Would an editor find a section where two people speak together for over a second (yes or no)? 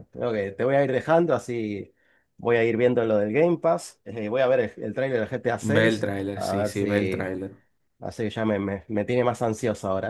yes